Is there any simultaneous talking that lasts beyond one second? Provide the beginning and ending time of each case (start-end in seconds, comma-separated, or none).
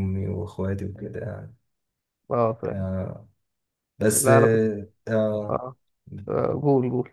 none